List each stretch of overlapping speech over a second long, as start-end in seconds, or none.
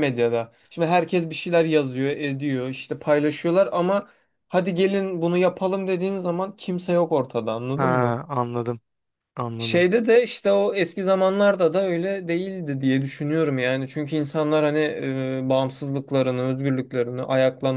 none